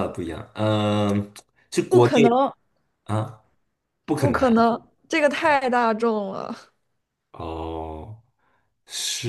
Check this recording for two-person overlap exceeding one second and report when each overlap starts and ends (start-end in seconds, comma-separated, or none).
none